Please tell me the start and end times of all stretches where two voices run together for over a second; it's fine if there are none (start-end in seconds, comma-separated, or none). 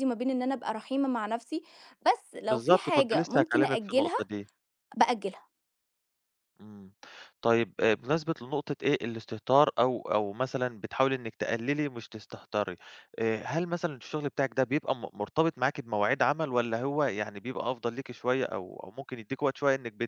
2.5-4.2